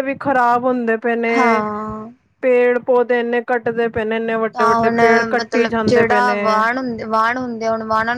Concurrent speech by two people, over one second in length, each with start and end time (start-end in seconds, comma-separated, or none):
none